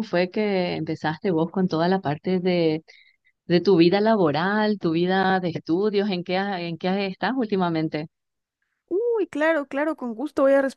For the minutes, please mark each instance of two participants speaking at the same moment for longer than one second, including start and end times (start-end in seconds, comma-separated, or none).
none